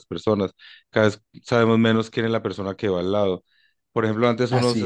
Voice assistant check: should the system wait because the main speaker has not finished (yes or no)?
yes